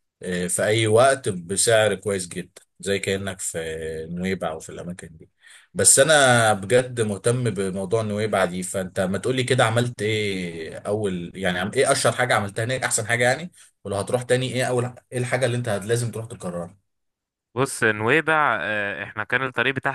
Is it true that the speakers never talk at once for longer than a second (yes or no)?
yes